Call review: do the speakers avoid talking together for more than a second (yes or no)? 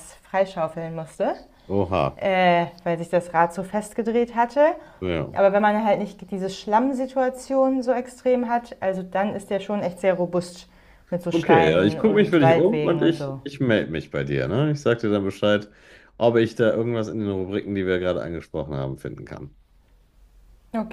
no